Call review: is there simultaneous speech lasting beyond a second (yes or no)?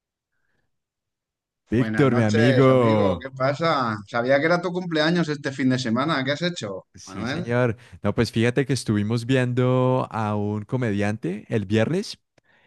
yes